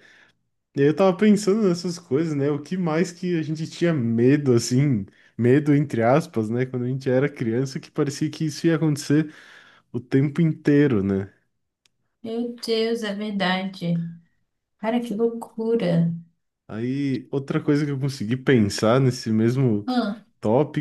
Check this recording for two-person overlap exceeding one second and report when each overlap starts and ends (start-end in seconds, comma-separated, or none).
none